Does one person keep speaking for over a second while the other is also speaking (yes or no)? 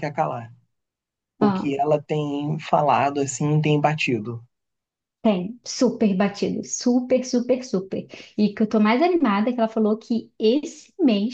no